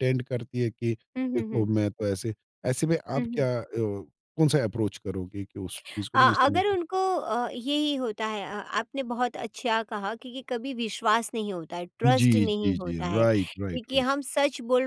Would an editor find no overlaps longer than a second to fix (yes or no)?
no